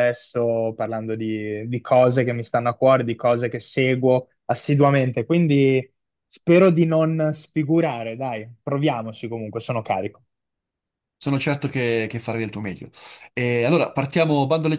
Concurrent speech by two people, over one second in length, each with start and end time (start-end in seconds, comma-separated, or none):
none